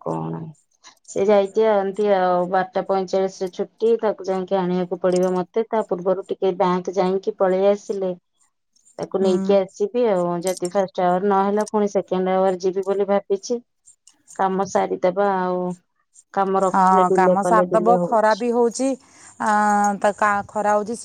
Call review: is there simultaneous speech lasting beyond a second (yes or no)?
yes